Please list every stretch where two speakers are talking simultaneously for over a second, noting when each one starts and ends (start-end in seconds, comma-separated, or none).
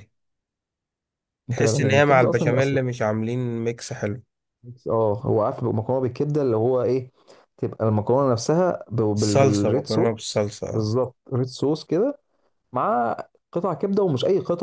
1.6-2.8, 9.2-10.9